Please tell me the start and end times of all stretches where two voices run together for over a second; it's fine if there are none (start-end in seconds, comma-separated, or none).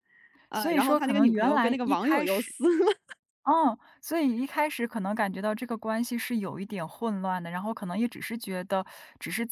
0.5-2.5